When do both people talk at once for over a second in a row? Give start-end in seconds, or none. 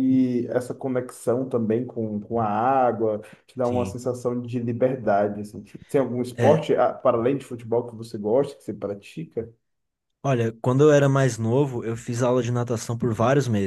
none